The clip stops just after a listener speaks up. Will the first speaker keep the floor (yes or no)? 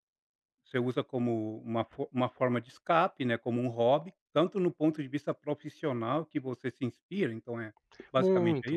no